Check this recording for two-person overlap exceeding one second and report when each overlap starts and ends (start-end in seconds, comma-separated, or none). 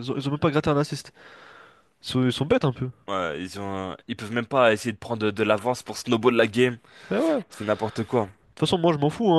none